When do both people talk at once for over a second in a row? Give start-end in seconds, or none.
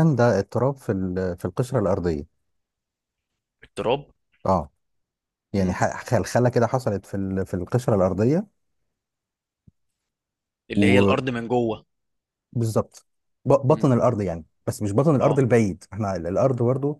none